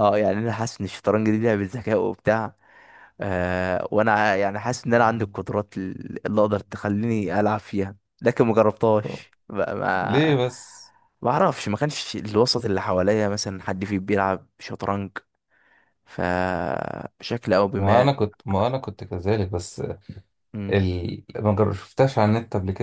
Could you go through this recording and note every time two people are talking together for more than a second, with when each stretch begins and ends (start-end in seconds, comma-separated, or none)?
none